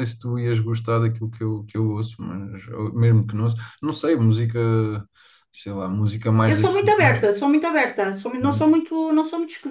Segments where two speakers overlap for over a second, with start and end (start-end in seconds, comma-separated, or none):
none